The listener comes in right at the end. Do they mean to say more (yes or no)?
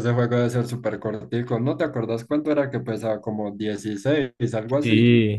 yes